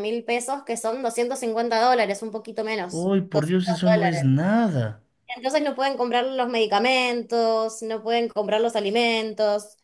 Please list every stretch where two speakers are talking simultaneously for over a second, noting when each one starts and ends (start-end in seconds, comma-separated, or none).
2.9-4.3